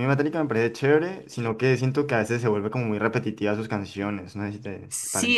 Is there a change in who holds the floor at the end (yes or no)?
yes